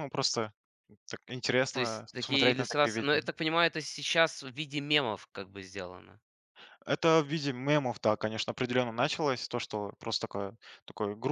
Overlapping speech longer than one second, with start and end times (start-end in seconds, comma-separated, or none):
1.7-3.2